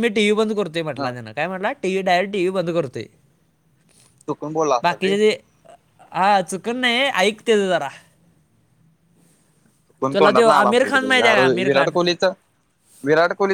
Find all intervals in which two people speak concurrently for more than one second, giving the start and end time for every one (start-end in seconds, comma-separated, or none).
10.1-11.9